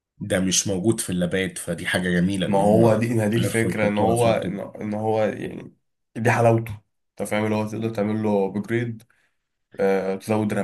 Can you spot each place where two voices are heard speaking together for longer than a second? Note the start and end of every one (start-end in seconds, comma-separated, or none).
2.5-4.6